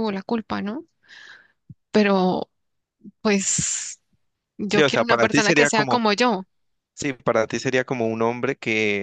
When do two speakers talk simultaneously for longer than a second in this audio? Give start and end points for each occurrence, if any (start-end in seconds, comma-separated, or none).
4.7-6.0